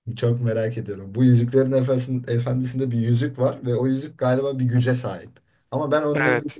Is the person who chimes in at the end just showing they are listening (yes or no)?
yes